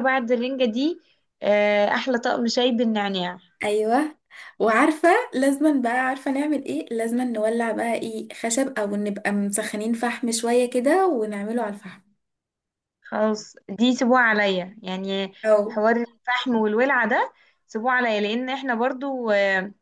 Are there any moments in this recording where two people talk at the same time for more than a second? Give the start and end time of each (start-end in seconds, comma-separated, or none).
none